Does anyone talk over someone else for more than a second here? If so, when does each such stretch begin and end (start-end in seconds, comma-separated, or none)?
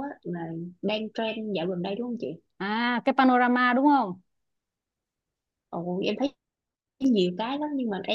none